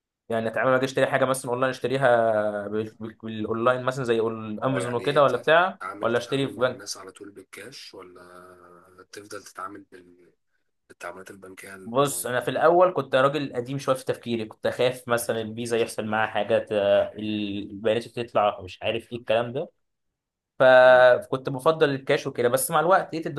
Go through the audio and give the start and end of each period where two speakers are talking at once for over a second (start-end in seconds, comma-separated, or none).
4.6-6.9